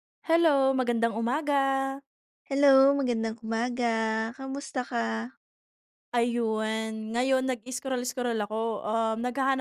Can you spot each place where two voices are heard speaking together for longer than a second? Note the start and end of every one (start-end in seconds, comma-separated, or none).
none